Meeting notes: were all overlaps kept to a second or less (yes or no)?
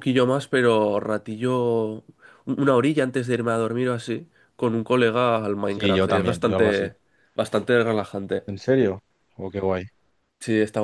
no